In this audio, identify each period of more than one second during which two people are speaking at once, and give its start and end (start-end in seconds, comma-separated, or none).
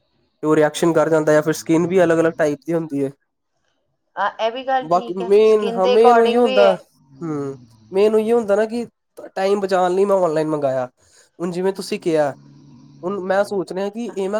4.9-6.8